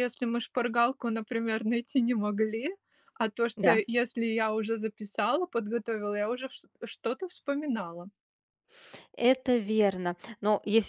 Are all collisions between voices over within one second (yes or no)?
yes